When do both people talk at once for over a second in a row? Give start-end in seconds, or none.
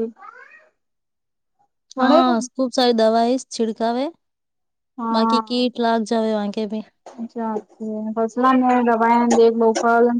none